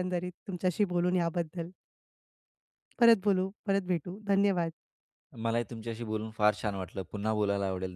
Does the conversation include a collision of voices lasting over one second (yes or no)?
no